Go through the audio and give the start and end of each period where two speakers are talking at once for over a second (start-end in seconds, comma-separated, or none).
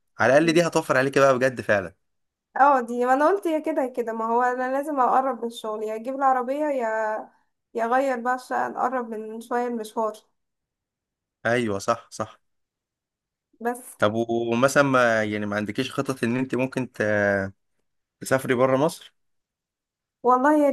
none